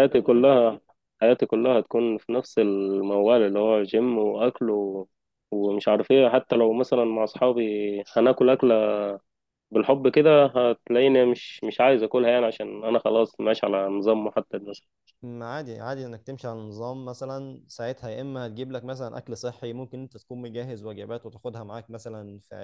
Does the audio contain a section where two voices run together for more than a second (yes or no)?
no